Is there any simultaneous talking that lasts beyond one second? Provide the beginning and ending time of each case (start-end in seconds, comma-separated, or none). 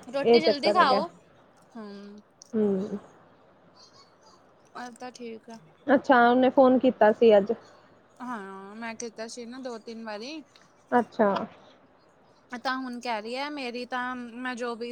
none